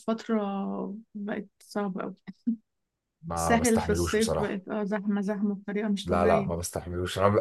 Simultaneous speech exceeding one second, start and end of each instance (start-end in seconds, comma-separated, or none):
3.4-4.6